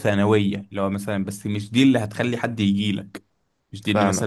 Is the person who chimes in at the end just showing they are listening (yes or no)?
yes